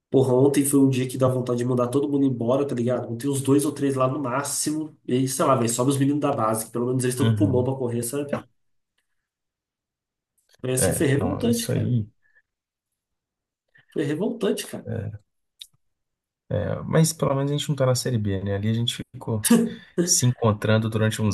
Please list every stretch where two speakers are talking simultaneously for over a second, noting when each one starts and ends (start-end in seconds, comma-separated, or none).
10.8-12.0